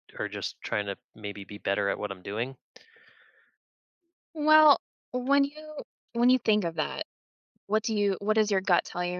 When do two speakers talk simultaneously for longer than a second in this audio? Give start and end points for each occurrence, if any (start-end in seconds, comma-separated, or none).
none